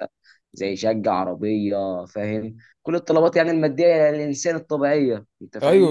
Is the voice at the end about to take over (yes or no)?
yes